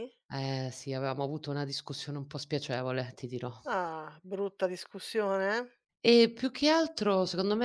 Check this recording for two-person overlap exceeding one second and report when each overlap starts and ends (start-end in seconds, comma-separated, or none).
none